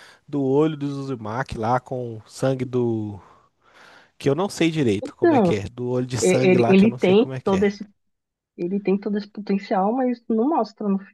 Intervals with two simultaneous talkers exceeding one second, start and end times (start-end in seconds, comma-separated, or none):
6.2-7.7